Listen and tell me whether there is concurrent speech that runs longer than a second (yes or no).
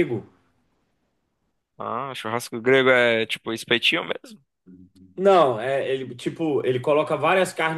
no